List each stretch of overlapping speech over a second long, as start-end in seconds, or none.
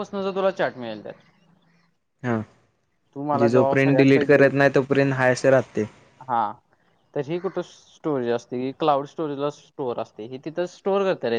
3.1-4.5